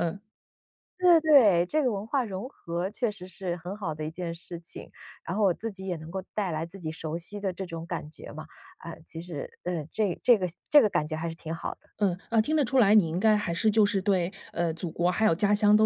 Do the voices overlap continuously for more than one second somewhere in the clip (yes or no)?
no